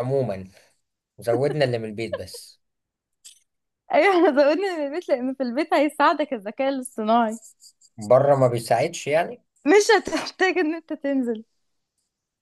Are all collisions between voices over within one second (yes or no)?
yes